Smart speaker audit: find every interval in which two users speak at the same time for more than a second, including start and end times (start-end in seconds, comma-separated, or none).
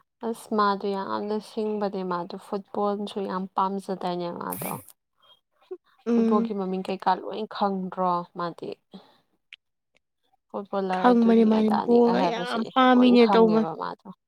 10.9-13.7